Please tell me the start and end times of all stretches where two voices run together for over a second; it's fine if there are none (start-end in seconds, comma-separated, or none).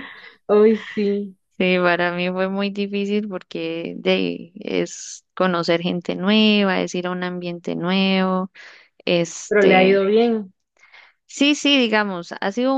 none